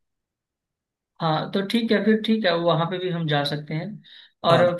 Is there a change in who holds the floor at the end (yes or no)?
no